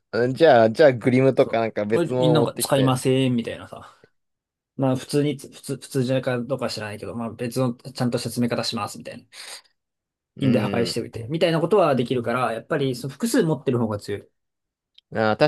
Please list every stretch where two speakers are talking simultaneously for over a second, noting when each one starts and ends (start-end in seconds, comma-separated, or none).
1.4-3.0